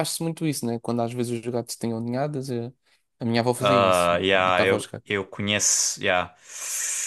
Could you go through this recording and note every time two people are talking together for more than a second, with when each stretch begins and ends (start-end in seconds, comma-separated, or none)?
3.6-5.1